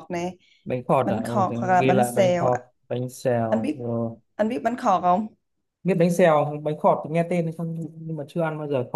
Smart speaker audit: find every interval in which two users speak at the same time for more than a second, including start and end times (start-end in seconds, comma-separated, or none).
1.0-2.5